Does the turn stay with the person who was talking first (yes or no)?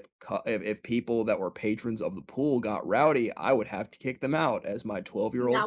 no